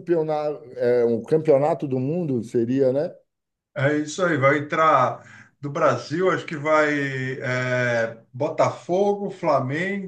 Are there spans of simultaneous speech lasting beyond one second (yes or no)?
no